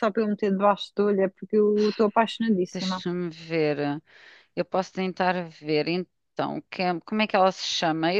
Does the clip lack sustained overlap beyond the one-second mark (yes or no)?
yes